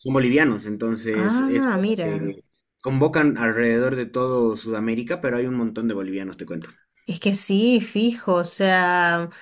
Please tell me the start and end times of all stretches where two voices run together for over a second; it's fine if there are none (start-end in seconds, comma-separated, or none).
1.1-2.4